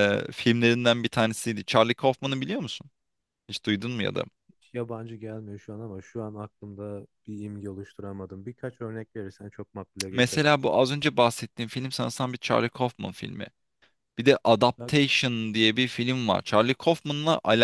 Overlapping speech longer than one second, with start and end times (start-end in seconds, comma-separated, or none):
none